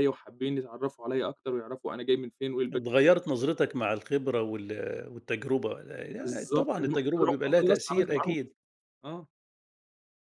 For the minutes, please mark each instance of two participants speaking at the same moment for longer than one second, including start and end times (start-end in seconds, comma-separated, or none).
6.2-8.5